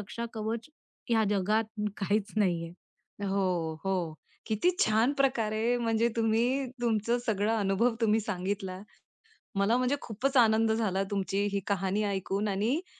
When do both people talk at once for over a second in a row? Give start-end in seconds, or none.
none